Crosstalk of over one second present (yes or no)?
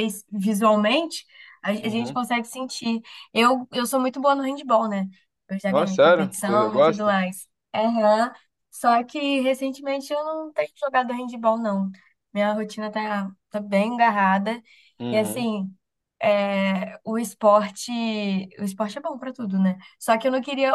yes